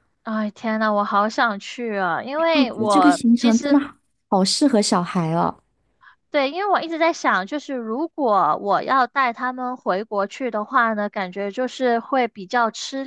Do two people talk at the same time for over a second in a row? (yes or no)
yes